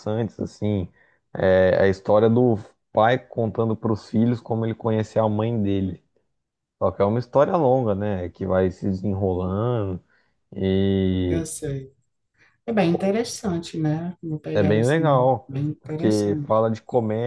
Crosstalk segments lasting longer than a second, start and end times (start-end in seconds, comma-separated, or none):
14.5-16.6